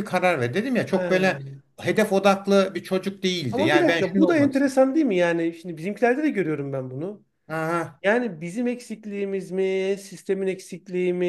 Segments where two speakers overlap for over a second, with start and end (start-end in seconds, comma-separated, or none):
3.5-4.7